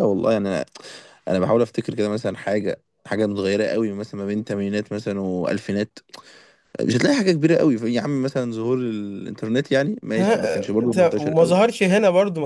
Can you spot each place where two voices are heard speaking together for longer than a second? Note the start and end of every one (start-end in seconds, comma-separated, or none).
10.2-11.6